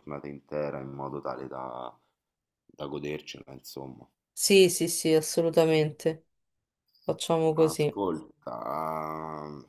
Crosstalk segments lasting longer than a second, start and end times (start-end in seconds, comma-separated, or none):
none